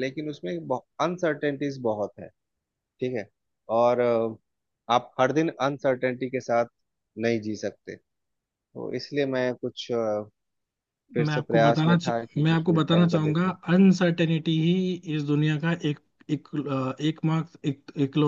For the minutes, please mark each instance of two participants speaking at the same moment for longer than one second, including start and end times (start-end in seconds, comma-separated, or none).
11.3-13.5